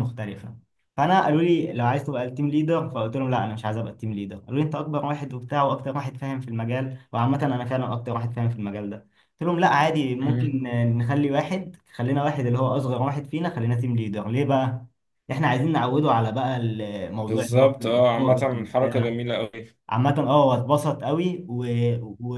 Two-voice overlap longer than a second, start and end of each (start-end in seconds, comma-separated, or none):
17.2-19.2